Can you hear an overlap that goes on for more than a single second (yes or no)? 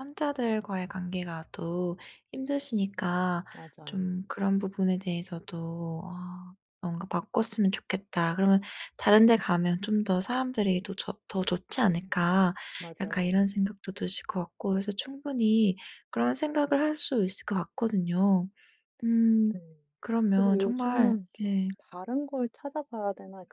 yes